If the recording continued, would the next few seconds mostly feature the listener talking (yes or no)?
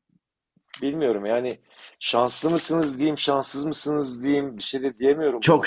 yes